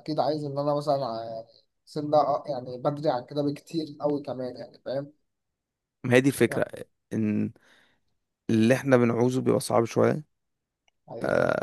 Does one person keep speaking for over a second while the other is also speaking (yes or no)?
no